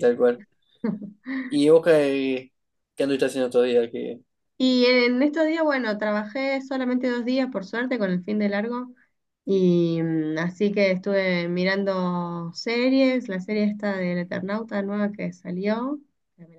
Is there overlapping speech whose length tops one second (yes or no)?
no